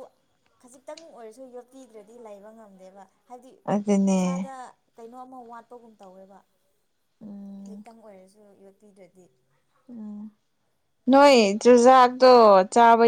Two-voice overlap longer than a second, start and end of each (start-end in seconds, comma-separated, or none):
none